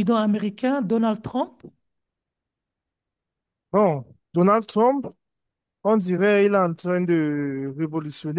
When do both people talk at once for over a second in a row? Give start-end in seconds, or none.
none